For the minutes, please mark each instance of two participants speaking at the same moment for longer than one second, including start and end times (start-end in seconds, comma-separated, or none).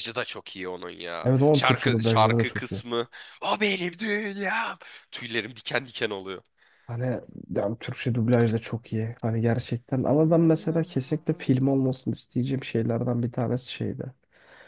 1.2-2.8